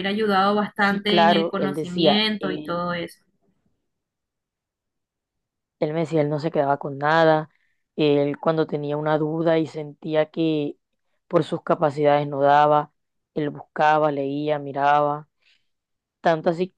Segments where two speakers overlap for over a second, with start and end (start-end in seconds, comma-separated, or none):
0.9-2.9